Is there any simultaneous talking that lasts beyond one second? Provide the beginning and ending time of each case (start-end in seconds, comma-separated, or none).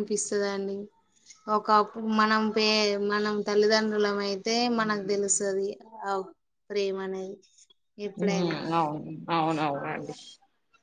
none